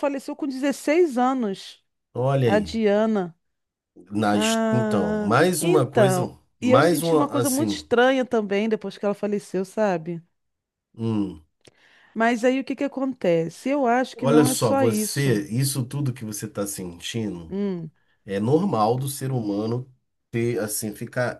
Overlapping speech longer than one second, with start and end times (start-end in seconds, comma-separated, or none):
4.3-7.9, 14.1-15.4